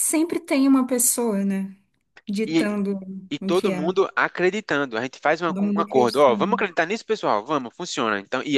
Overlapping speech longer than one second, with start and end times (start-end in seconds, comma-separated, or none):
5.4-6.7